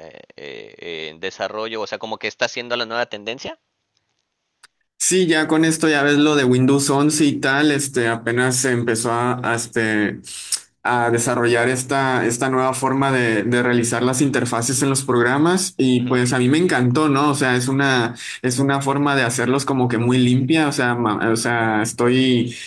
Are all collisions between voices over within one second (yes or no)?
yes